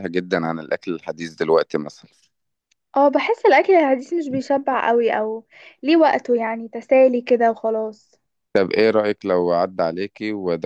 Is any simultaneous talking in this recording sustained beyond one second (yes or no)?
no